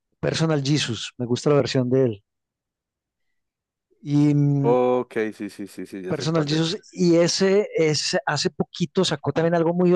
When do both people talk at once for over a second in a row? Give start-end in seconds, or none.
none